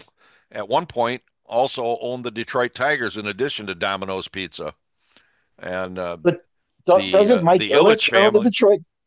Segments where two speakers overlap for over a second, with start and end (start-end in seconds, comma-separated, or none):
6.9-8.5